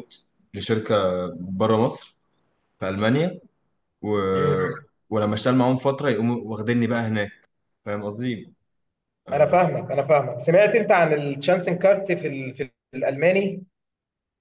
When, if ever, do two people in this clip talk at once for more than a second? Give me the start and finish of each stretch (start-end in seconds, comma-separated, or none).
none